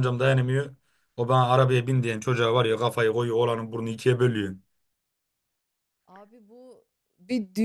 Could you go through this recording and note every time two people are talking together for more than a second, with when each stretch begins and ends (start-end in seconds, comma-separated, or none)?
none